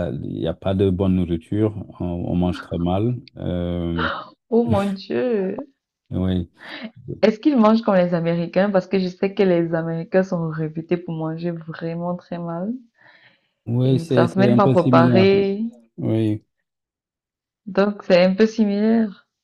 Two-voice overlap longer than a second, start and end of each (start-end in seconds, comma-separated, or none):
13.8-15.3